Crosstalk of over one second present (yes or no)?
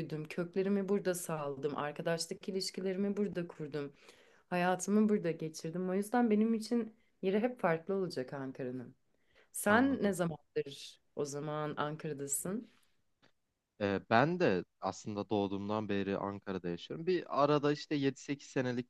no